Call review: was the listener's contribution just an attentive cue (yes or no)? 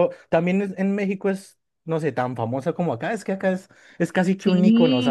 yes